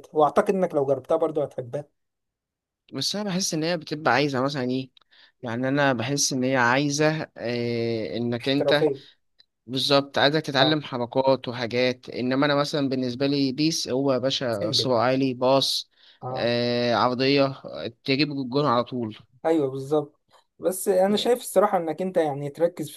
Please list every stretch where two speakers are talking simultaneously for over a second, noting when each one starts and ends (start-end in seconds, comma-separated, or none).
none